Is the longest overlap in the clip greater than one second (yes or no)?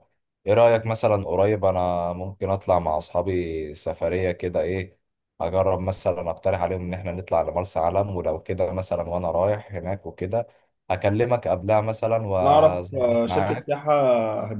yes